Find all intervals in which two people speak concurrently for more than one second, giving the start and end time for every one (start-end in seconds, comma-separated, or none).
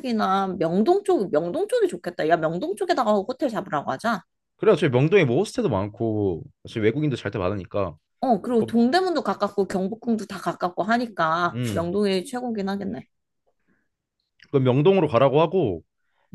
none